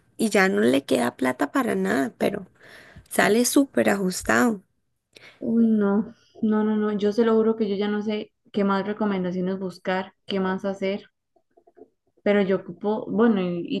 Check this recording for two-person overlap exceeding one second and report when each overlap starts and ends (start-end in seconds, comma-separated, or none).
none